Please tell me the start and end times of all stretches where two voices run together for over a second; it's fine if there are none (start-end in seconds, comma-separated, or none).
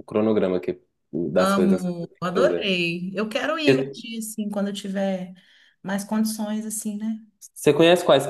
1.4-2.7